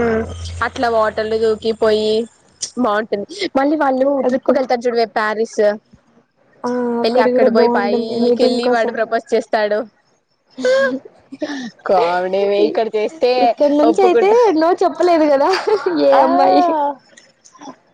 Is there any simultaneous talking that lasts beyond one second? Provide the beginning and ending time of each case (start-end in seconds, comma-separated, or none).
7.0-8.6